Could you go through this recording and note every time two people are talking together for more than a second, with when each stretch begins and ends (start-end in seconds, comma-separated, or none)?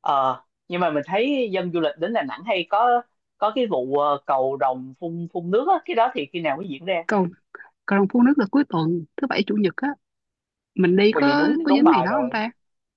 11.1-12.4